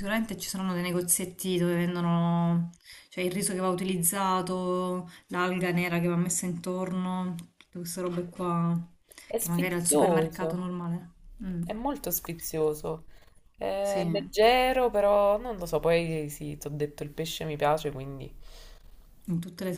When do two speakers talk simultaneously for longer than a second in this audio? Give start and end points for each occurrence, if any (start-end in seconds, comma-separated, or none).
9.4-10.7